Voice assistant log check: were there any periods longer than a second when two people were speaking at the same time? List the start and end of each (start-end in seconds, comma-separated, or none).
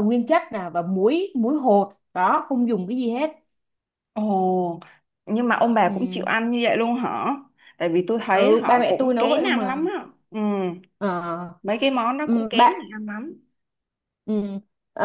8.3-9.9